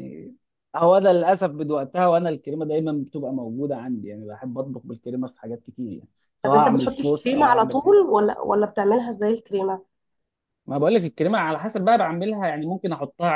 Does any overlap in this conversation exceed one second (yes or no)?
yes